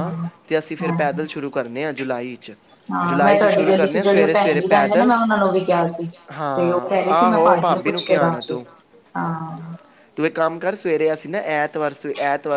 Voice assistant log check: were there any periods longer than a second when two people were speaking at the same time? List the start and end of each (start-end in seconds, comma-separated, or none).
3.1-5.1, 6.6-8.6